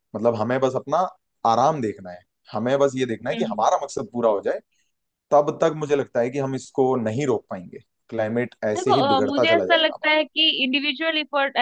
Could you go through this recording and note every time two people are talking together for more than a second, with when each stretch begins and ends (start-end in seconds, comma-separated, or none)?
8.8-10.2